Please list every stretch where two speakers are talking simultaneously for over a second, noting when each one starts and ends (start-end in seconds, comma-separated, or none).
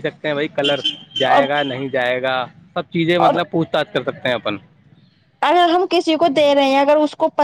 none